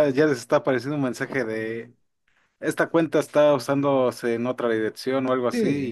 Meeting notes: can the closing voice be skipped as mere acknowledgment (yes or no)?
no